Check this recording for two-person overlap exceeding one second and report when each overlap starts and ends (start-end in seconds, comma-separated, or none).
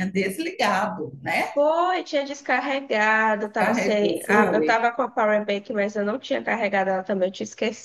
3.6-4.8